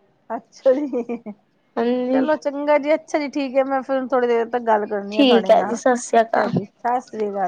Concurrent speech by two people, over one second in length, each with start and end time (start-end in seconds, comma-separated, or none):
5.1-6.5